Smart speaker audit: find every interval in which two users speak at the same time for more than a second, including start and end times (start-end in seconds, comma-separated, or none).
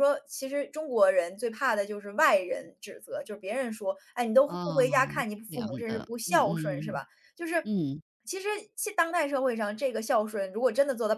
4.5-7.0